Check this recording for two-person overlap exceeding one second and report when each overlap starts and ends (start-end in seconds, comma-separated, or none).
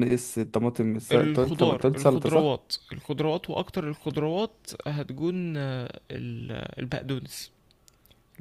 1.1-2.5